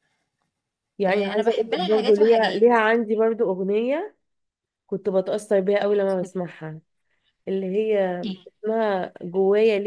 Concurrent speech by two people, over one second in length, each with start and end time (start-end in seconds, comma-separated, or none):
1.1-2.6